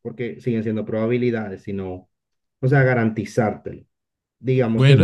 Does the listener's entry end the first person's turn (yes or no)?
yes